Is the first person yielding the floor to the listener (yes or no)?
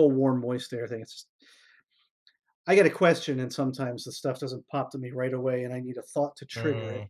yes